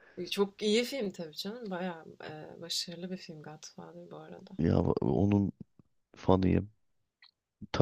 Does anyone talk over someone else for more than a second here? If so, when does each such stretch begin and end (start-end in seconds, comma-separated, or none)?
none